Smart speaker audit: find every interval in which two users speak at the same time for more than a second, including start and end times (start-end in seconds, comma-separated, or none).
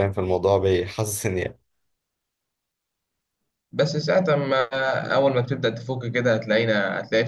none